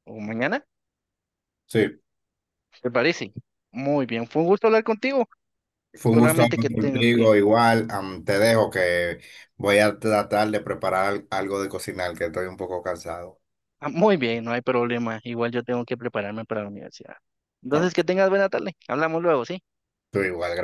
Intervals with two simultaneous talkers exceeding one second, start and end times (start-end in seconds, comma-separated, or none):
6.1-7.3